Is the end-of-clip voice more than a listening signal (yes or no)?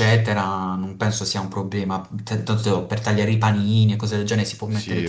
yes